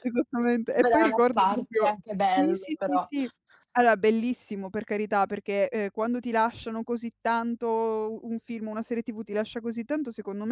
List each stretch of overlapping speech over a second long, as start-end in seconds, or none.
0.8-3.1